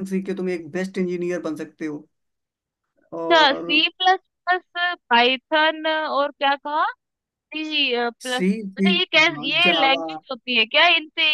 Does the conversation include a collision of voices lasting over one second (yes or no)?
yes